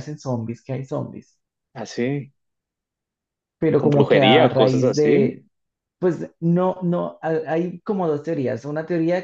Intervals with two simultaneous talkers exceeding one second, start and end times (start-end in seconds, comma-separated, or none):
3.8-5.4